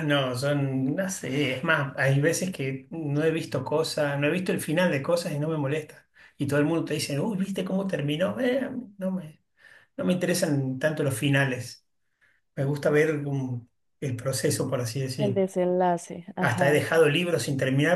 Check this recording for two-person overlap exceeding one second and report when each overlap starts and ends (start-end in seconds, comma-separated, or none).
none